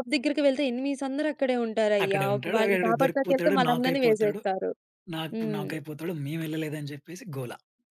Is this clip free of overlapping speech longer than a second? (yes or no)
no